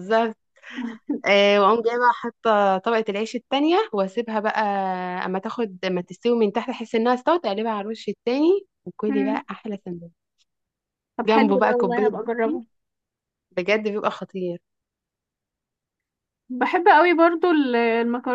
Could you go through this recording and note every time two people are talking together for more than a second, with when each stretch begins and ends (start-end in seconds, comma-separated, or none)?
11.3-12.6